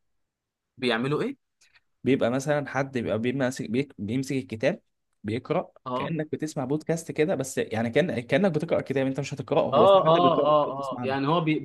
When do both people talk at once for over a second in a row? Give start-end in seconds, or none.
9.7-11.2